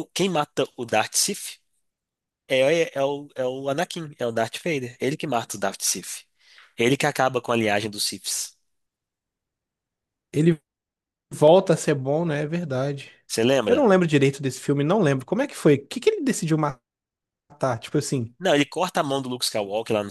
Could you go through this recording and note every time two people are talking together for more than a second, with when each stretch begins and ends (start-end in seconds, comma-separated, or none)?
none